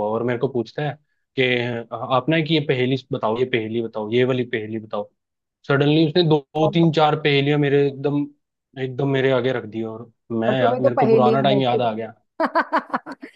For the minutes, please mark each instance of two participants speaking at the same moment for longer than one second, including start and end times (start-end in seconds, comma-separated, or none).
10.5-11.8